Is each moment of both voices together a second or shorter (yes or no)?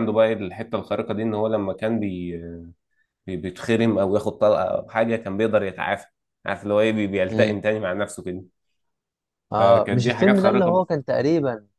no